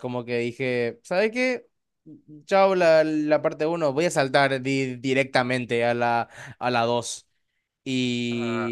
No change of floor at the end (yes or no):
yes